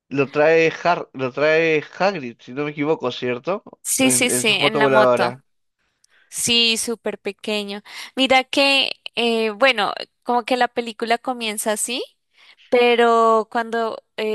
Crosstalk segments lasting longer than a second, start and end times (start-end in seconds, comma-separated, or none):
4.0-5.4